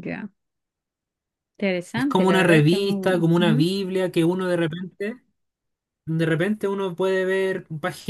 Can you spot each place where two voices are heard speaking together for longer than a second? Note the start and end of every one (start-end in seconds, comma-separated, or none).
1.9-3.7